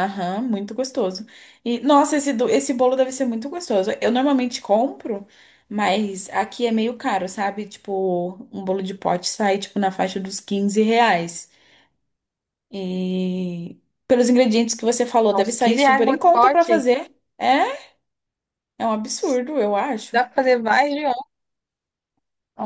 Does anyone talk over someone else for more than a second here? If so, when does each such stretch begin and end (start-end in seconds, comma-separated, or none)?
15.3-16.8